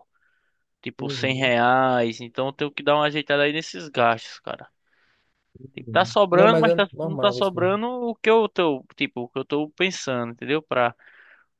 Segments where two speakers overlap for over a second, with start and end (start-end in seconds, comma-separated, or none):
5.8-7.8